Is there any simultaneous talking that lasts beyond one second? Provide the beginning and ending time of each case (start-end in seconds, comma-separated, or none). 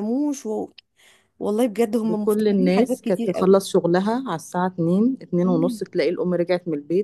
2.0-3.5